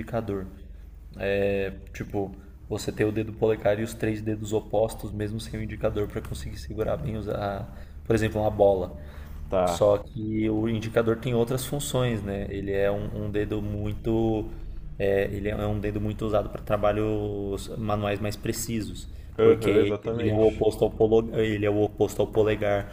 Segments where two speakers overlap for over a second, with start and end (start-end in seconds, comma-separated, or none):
19.4-20.6